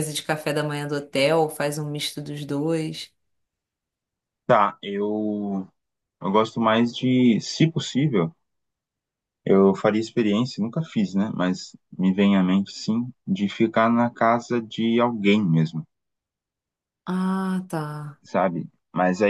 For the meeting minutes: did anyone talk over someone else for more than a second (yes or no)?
no